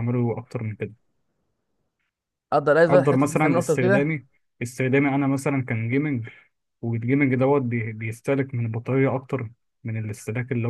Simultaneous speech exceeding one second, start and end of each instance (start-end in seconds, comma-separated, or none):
2.9-4.1